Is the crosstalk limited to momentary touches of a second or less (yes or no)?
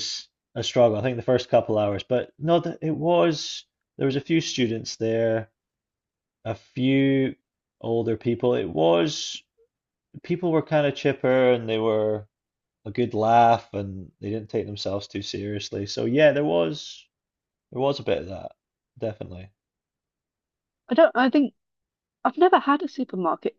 yes